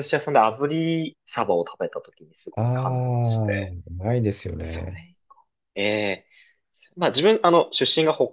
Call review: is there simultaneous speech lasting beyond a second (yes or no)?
yes